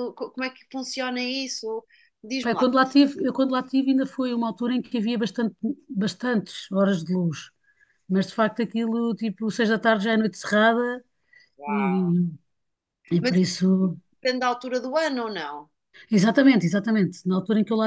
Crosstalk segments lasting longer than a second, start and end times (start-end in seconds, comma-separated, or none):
none